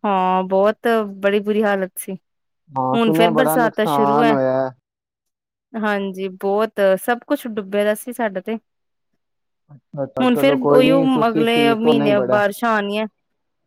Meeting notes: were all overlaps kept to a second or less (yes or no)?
no